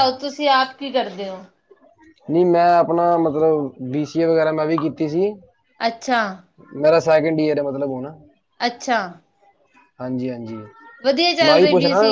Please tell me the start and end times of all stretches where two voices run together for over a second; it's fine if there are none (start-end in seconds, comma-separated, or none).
none